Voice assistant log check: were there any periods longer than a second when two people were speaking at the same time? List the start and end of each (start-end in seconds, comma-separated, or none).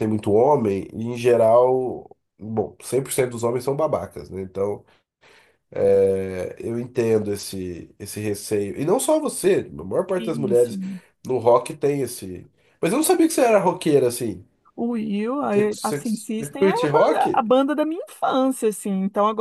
15.5-17.5